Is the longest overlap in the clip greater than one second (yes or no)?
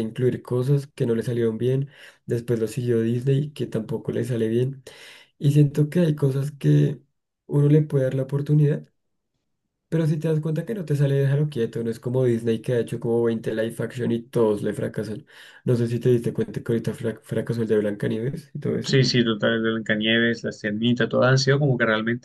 no